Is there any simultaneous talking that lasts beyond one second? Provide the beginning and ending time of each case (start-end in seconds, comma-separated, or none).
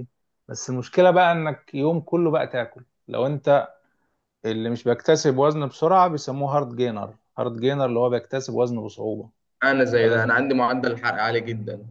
none